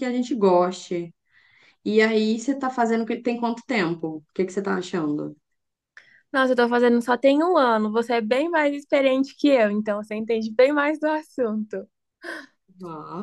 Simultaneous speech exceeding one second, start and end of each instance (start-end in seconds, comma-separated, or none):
none